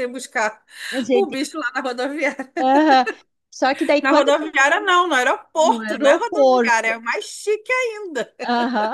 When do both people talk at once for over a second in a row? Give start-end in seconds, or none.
5.6-7.0